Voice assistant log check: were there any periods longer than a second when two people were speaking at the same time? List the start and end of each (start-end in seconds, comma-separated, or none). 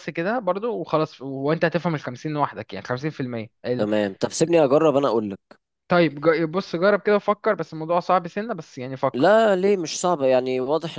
none